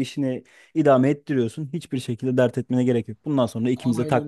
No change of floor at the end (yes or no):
no